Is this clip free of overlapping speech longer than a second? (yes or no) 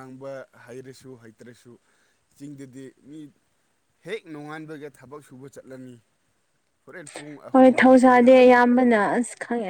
no